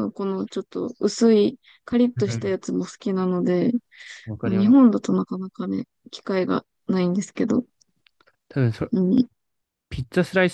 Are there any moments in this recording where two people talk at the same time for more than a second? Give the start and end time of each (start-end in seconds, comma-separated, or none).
none